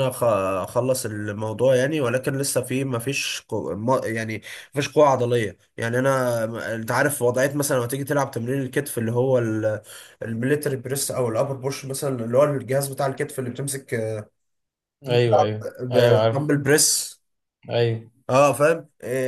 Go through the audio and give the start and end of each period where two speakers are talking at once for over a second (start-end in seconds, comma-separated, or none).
none